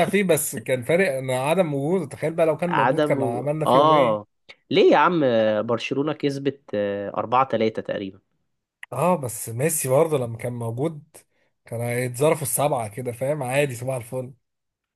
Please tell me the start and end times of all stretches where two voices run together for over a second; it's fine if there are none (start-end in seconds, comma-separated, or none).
2.7-4.3